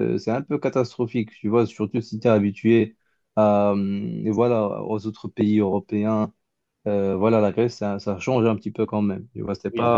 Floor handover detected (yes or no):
no